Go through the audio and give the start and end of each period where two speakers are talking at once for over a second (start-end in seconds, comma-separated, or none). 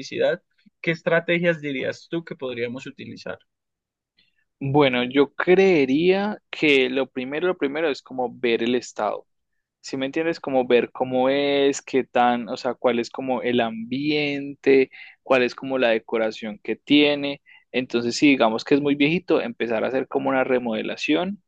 none